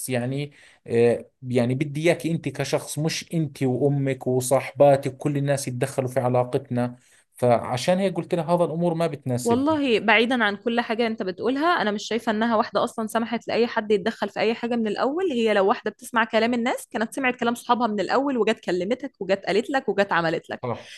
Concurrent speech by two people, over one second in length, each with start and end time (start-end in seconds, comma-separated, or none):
none